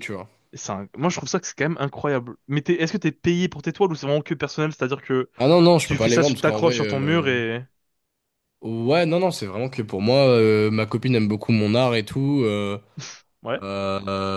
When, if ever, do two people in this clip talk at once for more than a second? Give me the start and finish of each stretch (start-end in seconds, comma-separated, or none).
5.8-7.3